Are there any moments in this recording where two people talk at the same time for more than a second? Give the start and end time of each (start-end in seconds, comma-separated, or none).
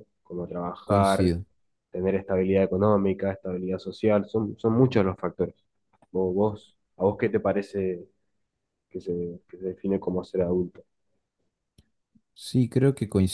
none